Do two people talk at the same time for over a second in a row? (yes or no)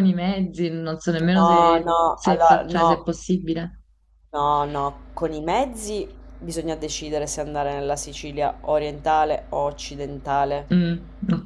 yes